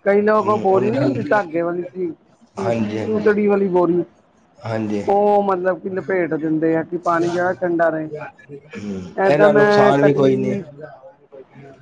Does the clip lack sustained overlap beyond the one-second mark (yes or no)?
no